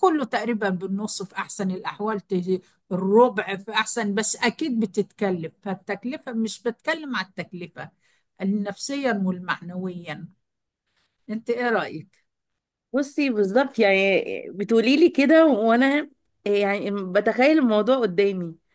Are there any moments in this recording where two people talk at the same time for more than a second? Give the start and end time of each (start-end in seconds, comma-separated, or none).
none